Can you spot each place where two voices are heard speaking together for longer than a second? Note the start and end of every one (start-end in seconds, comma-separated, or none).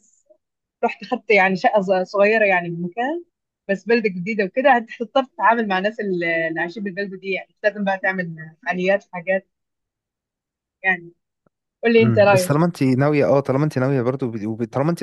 none